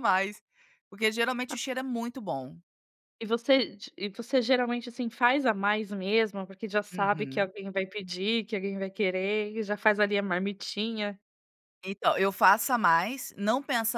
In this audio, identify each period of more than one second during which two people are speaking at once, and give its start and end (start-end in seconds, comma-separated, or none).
none